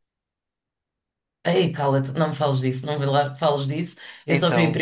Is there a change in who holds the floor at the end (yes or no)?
no